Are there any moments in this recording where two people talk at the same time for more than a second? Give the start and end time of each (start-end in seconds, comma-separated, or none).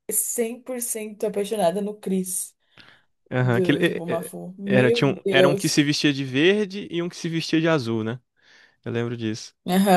3.4-5.7